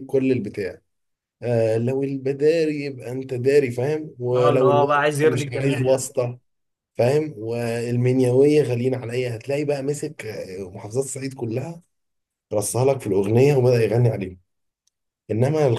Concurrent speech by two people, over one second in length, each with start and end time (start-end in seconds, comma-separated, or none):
4.3-6.1